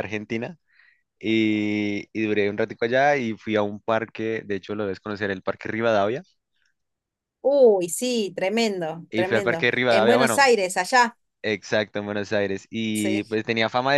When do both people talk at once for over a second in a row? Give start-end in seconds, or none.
9.1-10.5